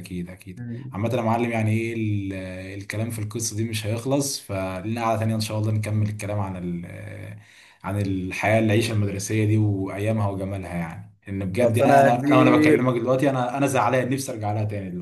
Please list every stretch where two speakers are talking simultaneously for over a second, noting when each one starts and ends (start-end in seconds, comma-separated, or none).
11.6-12.9